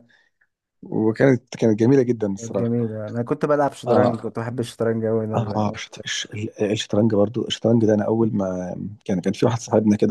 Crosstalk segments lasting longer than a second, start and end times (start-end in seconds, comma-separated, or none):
none